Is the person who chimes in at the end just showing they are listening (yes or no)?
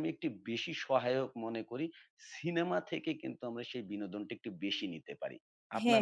no